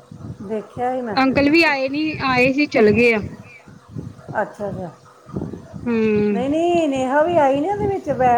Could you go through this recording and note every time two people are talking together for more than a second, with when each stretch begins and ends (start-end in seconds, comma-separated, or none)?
none